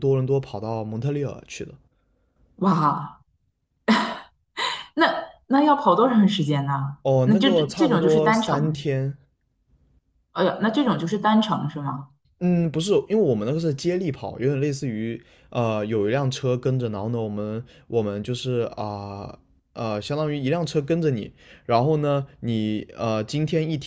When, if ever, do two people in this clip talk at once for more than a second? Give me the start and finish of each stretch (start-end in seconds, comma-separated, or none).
7.0-8.8